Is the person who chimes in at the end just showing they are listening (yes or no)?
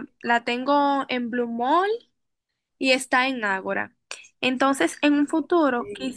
yes